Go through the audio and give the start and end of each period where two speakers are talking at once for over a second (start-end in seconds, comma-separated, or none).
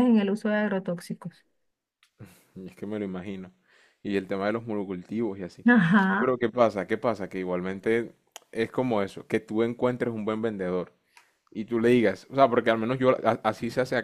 none